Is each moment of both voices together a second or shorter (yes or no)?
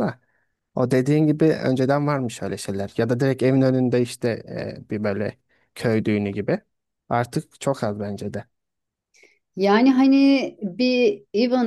yes